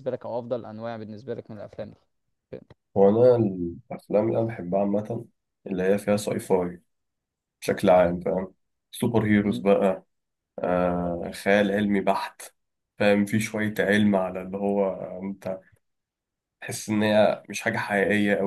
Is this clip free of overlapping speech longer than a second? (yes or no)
yes